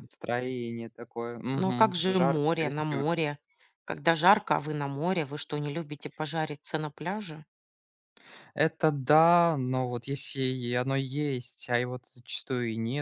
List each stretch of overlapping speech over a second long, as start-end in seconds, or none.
1.6-3.1